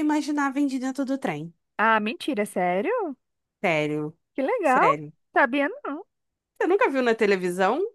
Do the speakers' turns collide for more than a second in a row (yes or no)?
no